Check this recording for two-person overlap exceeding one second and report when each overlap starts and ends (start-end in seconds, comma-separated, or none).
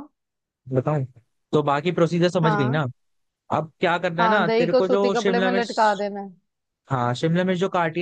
4.2-6.0